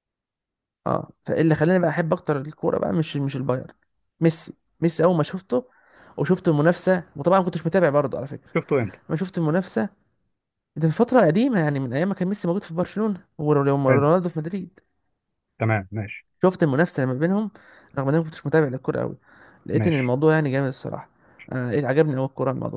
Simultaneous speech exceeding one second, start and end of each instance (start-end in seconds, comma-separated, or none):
none